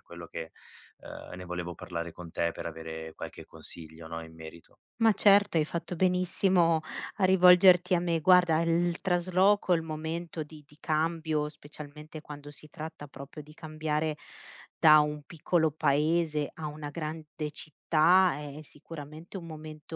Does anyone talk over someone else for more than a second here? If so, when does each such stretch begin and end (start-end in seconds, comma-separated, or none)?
none